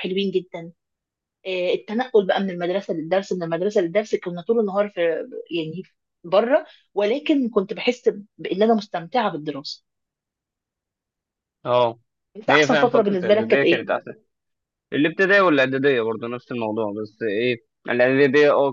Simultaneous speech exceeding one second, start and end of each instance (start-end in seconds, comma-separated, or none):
12.5-13.9